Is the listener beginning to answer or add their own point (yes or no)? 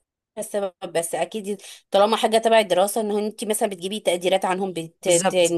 yes